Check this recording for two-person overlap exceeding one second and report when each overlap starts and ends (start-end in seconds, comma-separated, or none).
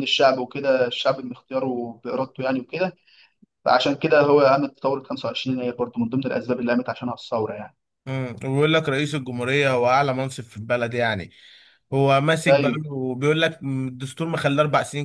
none